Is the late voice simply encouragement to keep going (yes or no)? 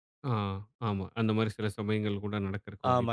no